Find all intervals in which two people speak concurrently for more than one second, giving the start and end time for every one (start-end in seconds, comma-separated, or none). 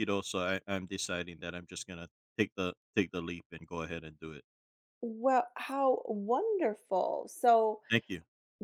none